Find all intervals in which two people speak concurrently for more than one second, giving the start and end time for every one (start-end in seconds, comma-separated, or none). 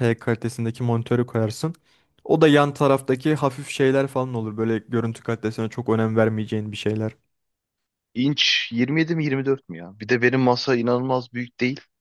none